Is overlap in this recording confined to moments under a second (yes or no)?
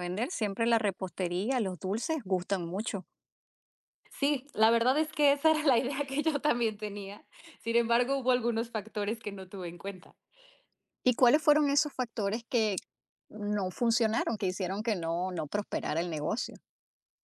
yes